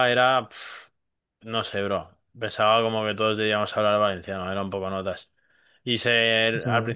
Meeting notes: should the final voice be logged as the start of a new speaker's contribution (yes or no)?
no